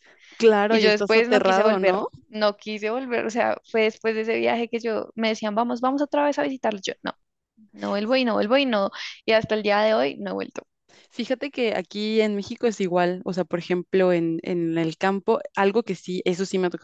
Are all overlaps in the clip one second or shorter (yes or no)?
no